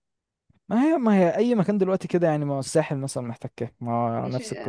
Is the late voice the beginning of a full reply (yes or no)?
yes